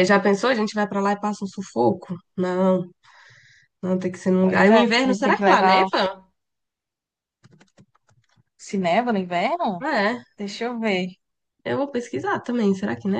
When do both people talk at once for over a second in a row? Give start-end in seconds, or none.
4.4-5.9